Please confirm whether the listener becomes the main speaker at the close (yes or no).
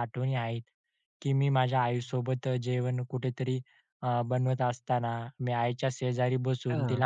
no